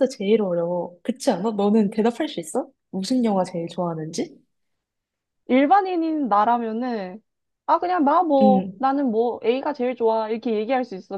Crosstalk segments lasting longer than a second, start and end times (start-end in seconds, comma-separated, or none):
none